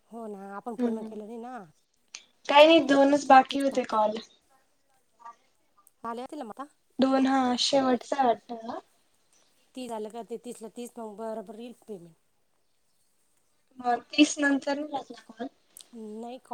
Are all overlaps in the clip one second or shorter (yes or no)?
yes